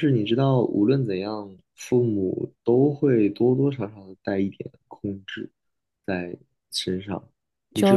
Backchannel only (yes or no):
yes